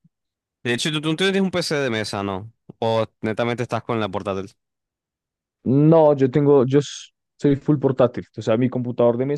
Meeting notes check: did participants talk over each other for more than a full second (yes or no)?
no